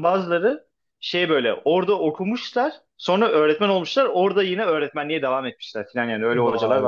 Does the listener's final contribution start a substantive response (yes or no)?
yes